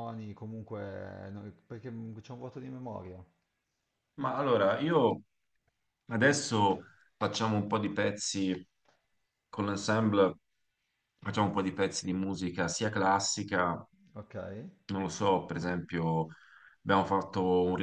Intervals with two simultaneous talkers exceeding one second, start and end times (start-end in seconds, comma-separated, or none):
none